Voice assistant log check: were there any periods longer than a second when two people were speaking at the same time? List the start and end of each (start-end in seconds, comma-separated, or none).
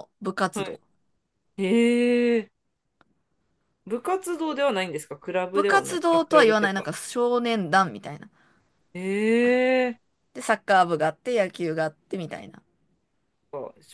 5.5-6.9